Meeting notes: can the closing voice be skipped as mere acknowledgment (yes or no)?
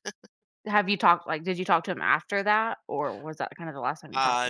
no